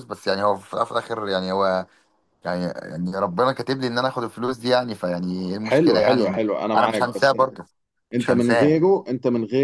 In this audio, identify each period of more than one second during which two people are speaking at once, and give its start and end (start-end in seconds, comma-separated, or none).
5.6-7.4